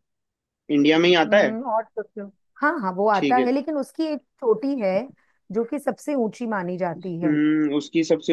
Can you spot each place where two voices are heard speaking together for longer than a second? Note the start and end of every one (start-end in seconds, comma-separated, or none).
none